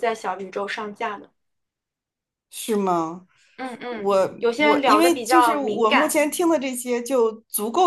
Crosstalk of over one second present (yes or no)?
yes